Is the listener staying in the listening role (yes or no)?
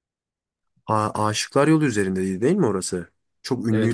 no